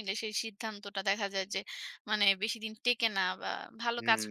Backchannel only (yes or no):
no